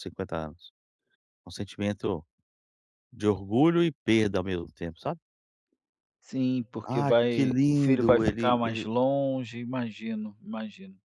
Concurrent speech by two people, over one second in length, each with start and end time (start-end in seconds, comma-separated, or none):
6.9-8.9